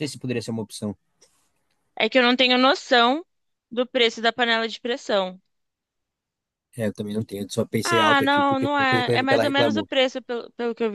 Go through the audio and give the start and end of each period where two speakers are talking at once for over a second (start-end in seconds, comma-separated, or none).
7.8-9.9